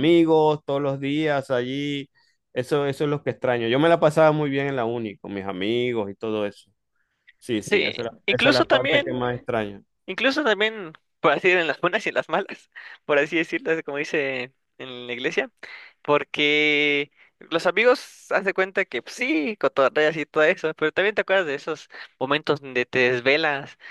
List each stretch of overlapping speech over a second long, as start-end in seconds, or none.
7.6-9.3